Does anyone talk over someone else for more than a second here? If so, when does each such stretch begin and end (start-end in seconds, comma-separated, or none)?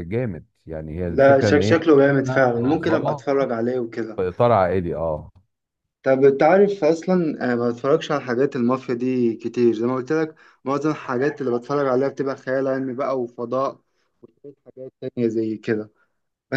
1.1-3.2